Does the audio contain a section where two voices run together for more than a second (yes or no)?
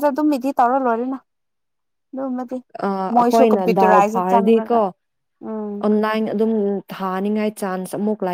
yes